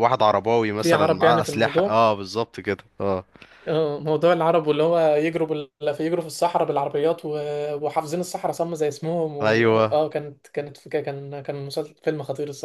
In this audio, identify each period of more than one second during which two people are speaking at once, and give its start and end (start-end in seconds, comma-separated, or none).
0.8-2.0